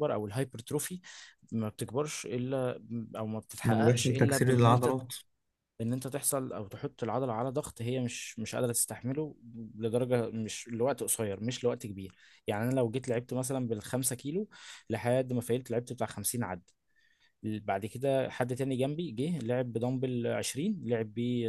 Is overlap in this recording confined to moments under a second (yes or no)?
no